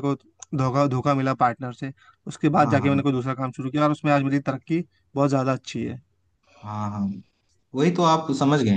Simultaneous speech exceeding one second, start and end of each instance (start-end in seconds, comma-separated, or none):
none